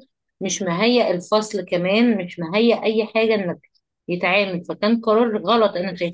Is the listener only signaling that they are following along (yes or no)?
no